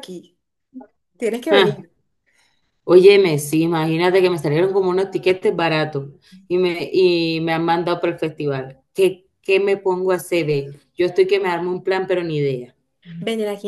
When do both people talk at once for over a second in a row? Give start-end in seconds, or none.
none